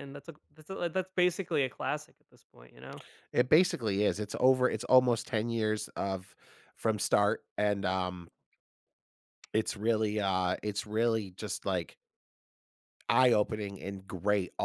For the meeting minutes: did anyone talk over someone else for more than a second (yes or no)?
no